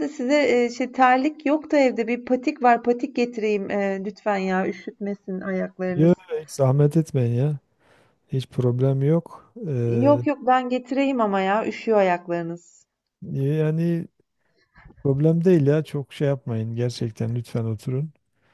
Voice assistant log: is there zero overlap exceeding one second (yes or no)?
yes